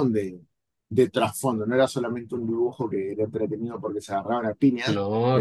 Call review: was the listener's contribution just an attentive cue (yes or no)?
yes